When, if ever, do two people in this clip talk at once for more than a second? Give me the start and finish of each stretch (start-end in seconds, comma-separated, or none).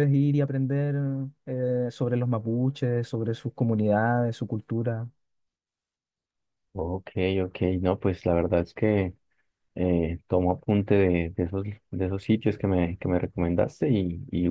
none